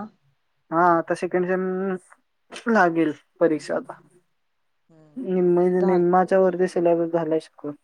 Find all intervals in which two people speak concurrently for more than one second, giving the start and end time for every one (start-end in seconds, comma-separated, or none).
5.2-6.8